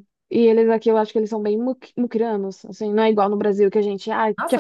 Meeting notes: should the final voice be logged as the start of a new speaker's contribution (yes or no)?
no